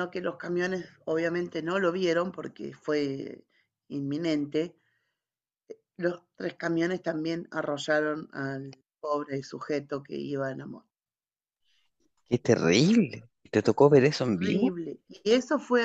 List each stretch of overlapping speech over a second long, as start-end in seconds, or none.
none